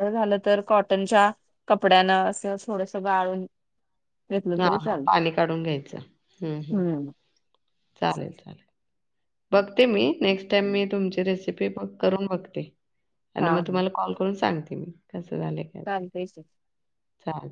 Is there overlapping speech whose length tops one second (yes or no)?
no